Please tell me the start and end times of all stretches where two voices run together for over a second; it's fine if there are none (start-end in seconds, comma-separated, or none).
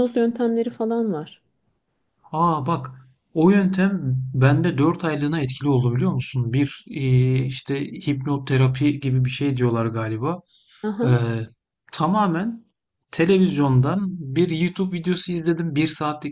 none